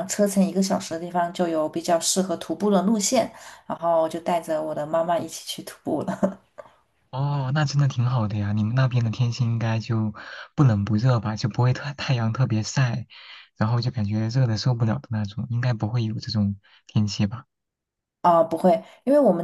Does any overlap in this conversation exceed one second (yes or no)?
no